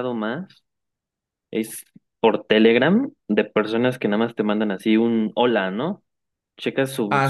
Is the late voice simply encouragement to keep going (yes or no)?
yes